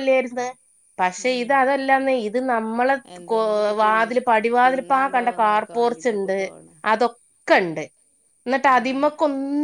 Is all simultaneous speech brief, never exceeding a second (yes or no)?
no